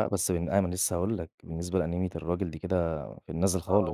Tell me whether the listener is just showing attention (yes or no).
no